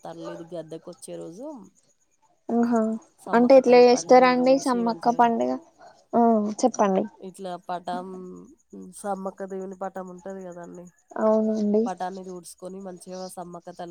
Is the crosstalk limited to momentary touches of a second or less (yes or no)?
no